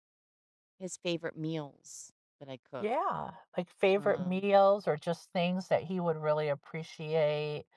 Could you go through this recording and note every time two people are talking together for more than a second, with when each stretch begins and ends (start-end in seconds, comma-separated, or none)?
none